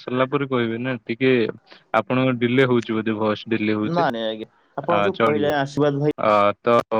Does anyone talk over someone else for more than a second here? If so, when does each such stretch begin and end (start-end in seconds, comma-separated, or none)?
none